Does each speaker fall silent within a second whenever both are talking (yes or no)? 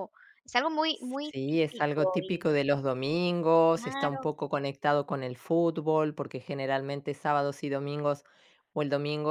no